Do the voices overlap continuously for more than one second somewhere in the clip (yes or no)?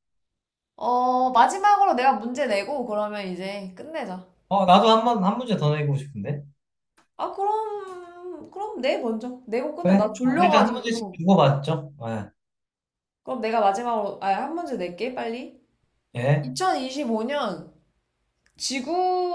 yes